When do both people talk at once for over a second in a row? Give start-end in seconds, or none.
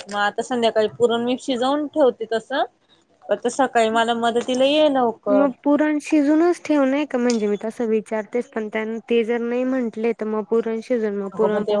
none